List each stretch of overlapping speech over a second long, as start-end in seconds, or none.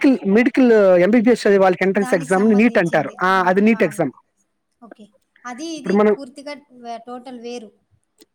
2.0-4.1